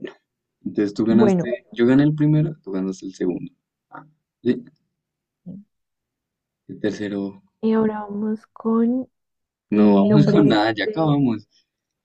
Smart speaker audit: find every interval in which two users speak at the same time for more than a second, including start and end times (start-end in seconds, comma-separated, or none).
9.7-11.2